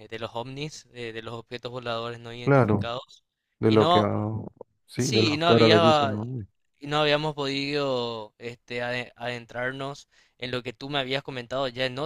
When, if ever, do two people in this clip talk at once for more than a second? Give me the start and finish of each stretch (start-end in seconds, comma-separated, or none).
5.0-6.2